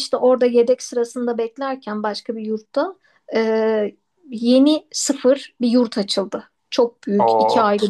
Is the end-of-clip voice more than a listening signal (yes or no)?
no